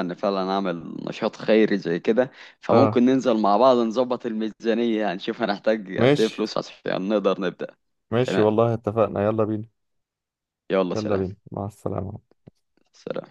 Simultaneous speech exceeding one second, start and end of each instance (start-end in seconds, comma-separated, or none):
none